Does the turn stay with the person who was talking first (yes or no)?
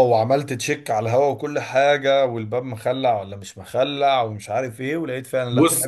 no